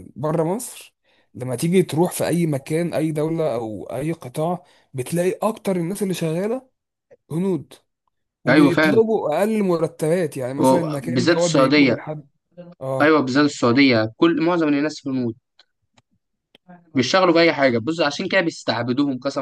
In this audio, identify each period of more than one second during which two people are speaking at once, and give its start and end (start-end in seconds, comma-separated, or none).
10.6-12.0